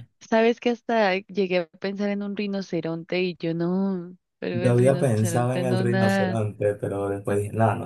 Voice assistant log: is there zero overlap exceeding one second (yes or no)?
no